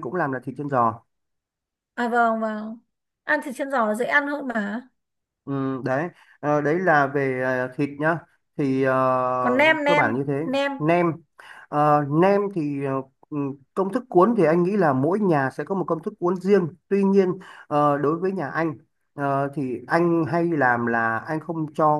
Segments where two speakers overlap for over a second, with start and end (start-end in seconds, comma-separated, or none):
none